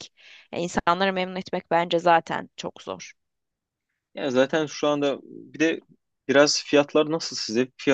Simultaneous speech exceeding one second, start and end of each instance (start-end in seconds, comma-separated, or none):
none